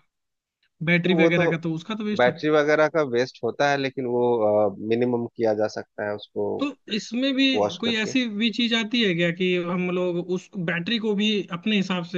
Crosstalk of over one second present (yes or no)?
no